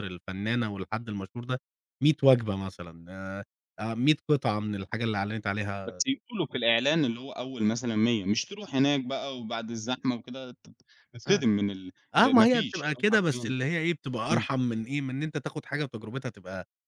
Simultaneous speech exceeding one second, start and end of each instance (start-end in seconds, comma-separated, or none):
12.1-13.5